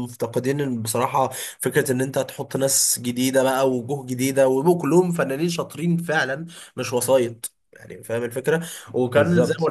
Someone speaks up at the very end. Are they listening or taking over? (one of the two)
listening